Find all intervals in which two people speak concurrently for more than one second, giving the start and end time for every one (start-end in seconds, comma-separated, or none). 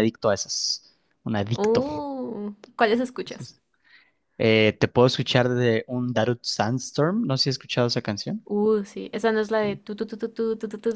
none